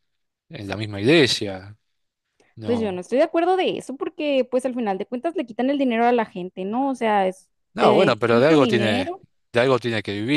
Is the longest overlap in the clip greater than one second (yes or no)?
yes